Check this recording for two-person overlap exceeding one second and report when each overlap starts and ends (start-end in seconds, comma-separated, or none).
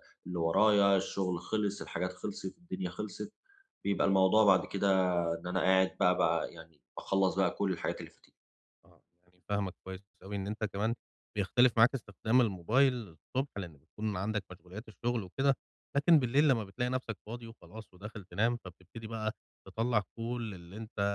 none